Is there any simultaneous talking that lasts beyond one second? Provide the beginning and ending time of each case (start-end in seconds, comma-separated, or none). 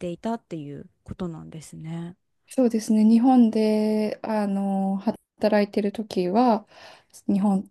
none